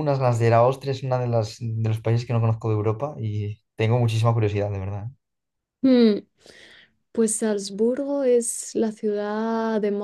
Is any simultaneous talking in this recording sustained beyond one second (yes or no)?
no